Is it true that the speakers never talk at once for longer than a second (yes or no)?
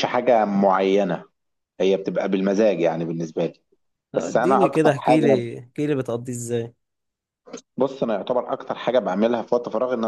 no